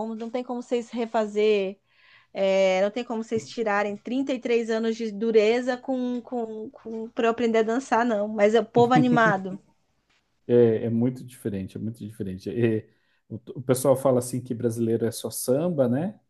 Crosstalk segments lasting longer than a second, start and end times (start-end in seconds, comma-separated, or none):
none